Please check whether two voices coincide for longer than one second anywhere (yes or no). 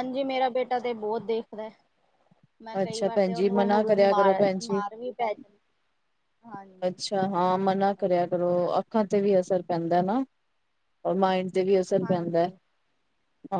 yes